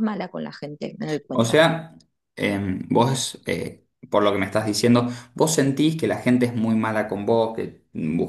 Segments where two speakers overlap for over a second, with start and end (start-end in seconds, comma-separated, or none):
none